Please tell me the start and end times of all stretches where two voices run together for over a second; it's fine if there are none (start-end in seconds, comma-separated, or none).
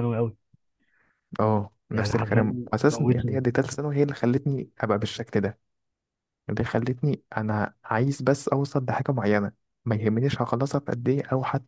1.9-3.4